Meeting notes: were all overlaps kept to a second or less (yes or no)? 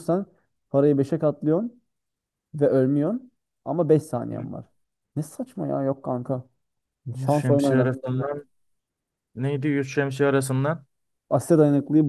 no